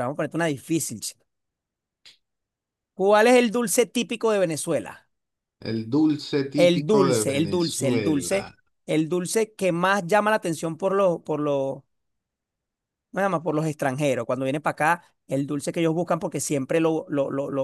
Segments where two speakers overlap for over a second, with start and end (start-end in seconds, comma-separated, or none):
6.5-8.5